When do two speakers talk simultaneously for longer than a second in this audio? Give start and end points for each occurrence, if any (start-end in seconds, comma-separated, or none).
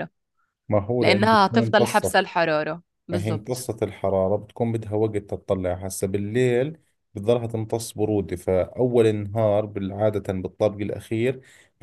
1.0-2.2